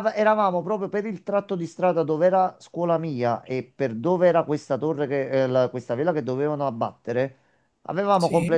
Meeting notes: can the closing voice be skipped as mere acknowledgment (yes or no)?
yes